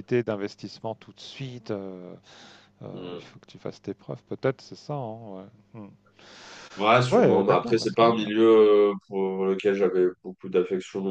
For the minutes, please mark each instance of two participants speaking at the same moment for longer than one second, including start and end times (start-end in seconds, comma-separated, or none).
7.1-8.3